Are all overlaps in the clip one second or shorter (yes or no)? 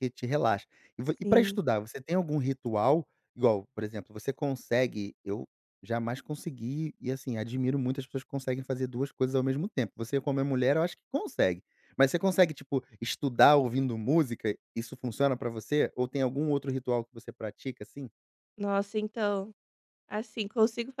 yes